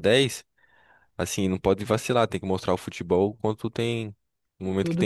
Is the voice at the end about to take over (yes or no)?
yes